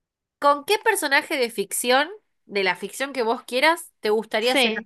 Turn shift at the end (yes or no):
no